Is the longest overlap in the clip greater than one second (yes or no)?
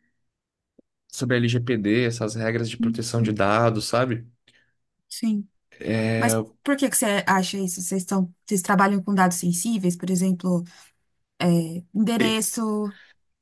no